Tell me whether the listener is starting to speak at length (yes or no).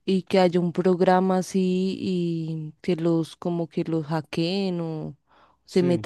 no